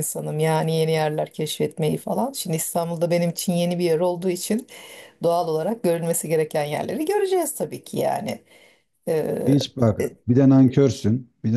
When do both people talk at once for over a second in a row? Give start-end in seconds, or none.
none